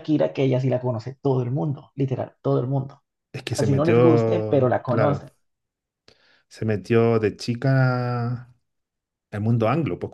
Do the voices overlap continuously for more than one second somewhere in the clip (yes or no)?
yes